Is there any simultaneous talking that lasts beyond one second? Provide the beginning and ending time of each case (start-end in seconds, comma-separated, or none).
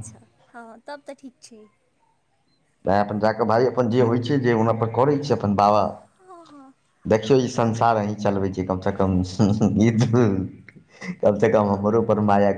none